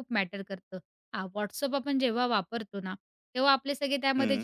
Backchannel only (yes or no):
yes